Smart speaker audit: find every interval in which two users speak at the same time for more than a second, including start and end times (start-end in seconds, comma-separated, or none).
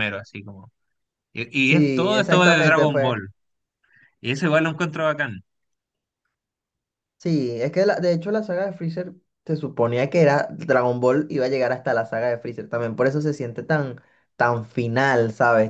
1.6-3.2